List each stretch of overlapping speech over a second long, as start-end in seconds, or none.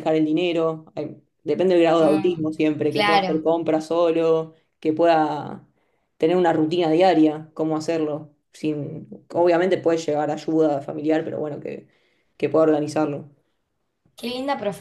2.0-3.5